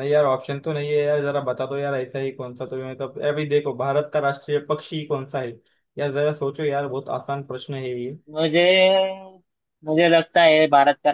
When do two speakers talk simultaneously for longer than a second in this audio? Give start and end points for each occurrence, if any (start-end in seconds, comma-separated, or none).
none